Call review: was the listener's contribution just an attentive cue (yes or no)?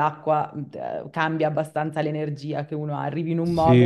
no